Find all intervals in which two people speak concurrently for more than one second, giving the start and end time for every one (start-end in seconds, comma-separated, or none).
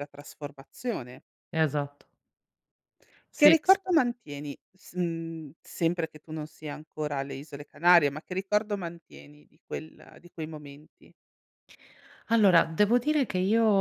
none